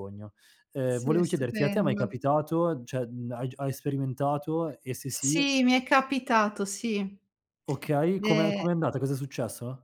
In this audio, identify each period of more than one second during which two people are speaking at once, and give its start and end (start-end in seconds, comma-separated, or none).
0.9-2.1